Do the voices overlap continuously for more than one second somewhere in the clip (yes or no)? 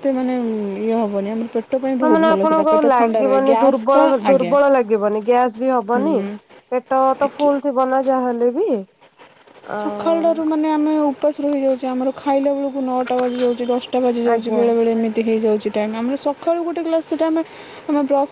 yes